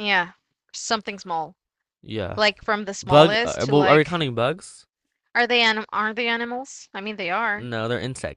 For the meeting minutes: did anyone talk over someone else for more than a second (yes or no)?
yes